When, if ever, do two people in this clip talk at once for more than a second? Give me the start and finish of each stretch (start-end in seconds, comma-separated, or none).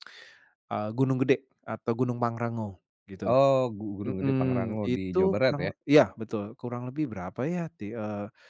4.1-5.7